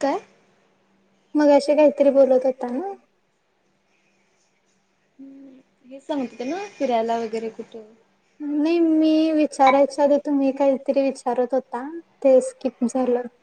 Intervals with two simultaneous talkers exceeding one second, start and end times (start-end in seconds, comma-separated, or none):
none